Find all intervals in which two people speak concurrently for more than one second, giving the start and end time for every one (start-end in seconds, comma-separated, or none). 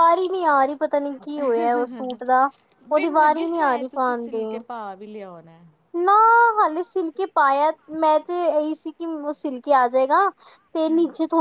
2.9-4.6